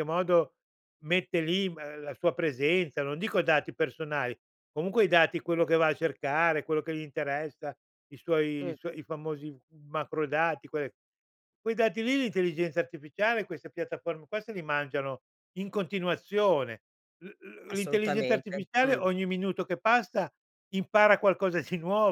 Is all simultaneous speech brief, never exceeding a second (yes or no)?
no